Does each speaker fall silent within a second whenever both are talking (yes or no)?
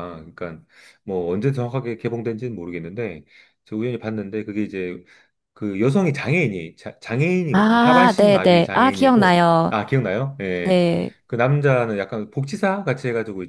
no